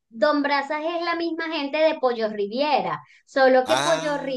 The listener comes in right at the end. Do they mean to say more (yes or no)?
no